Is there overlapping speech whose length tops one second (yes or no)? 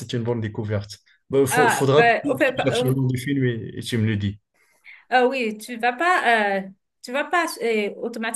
yes